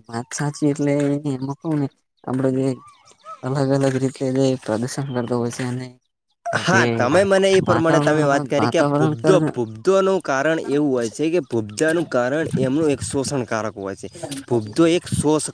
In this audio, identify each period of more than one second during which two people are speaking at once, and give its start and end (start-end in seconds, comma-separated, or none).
7.7-9.2